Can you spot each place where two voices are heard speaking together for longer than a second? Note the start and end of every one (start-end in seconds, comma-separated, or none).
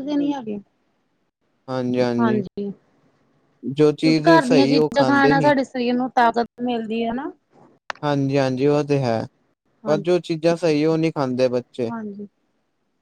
4.0-5.5